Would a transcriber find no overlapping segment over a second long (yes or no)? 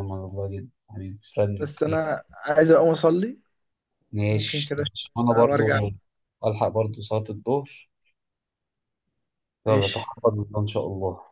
no